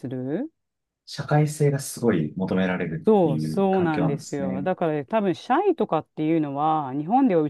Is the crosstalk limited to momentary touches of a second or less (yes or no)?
no